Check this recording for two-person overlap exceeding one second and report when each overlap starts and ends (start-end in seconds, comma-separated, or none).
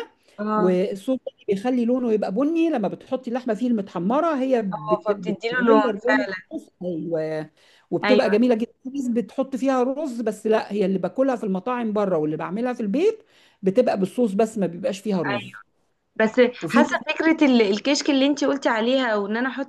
4.7-6.3